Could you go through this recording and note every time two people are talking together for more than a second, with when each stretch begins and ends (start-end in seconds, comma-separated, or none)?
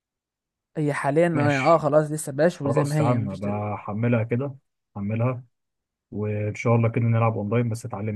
2.6-3.9